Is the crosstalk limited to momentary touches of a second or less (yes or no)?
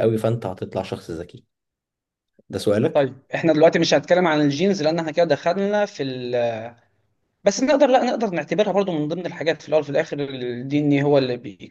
yes